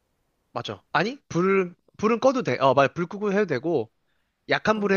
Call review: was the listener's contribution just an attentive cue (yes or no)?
yes